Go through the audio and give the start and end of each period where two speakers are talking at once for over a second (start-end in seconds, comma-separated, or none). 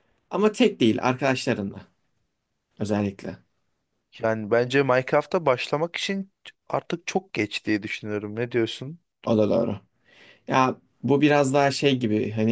none